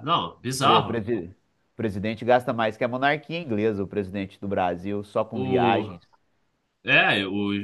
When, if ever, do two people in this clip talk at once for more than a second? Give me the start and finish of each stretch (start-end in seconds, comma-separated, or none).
none